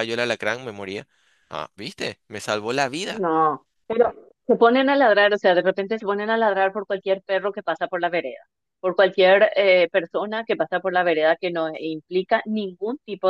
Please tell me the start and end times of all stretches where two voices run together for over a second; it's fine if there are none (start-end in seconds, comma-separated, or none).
none